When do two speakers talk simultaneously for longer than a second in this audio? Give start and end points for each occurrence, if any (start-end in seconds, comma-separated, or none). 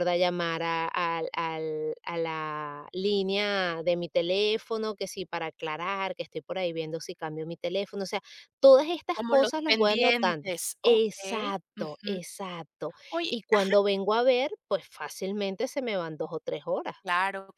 9.1-12.2